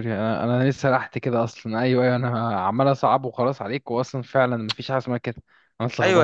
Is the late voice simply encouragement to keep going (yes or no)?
no